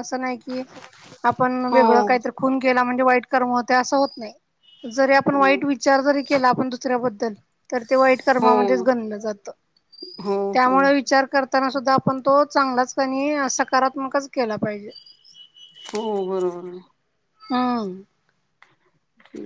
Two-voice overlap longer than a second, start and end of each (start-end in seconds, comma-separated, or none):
none